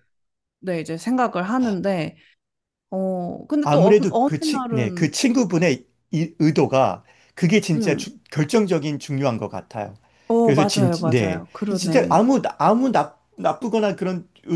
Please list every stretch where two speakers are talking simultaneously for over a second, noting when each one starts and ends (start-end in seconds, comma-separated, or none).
3.6-5.1, 10.4-12.3